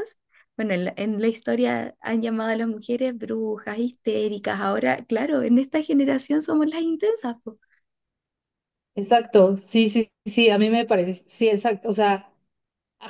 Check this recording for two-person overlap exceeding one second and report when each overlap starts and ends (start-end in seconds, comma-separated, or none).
none